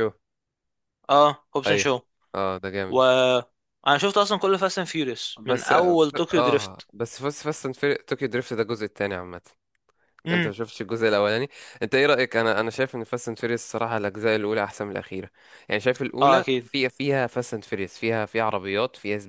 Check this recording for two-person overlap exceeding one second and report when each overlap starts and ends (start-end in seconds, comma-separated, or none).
5.4-6.9